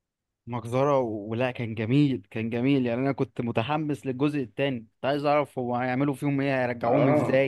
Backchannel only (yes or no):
no